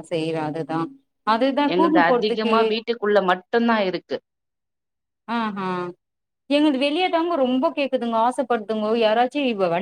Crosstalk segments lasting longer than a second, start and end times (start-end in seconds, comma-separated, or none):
none